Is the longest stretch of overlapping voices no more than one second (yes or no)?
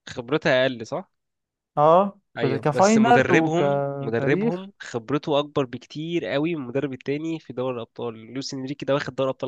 no